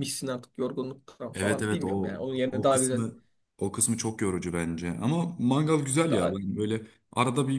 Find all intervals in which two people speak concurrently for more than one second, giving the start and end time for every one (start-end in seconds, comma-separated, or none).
1.3-3.0